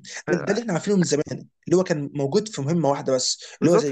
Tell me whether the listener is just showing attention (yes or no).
no